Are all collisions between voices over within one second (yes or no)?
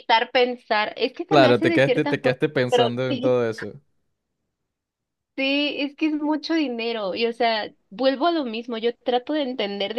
no